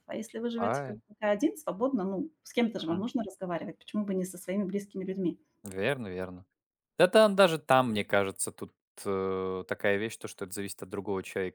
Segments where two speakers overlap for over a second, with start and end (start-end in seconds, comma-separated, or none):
none